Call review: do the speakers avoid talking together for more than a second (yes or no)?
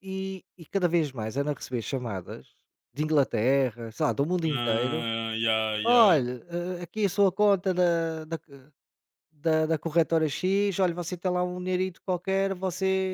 yes